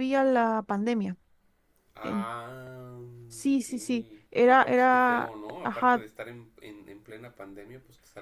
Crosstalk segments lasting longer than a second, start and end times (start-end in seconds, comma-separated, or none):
4.5-6.0